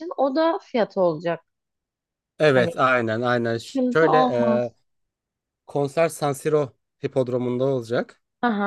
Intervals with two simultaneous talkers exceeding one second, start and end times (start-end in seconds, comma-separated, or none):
none